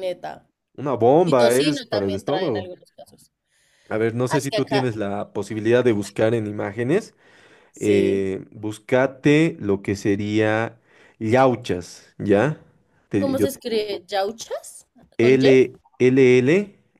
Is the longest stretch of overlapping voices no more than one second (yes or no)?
no